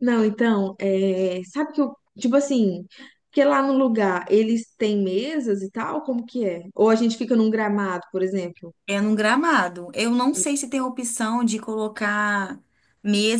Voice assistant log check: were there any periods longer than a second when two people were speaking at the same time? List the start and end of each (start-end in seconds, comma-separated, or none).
none